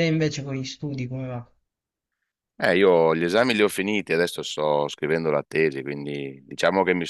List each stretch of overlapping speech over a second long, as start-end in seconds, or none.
none